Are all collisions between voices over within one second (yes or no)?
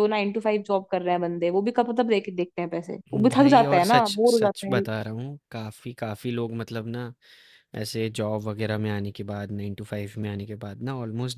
no